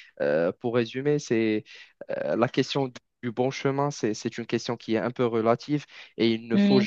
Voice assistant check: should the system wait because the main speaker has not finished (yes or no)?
yes